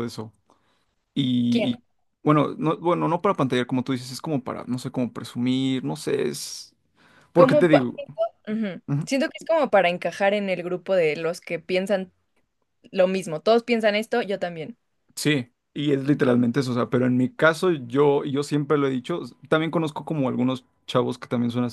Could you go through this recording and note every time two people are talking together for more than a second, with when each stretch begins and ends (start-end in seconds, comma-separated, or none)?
none